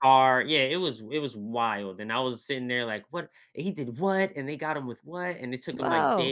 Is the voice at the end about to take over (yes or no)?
no